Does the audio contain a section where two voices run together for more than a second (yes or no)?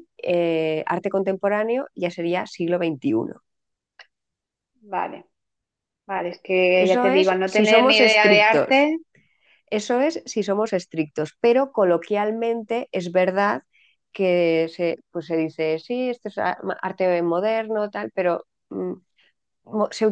yes